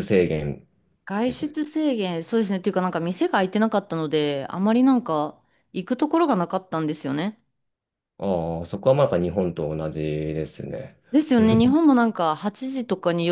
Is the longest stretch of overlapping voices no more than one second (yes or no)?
yes